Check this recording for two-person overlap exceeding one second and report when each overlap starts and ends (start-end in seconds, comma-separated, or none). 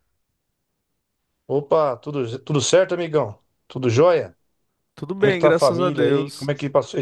5.2-6.5